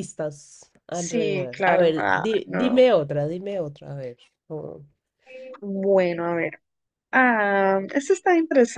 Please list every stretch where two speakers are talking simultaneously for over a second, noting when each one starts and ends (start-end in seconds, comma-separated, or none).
0.9-2.9